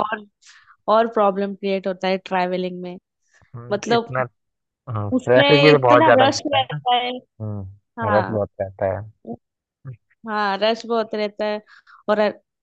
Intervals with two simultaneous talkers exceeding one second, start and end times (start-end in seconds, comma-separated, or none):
5.1-6.8